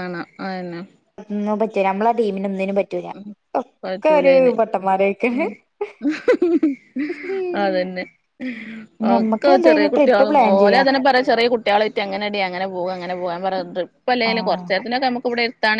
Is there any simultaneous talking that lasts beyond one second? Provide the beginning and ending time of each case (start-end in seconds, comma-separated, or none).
9.1-10.8